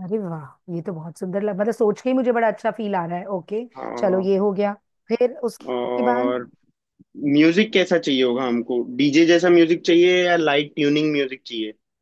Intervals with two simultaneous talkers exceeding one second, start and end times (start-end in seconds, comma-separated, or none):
none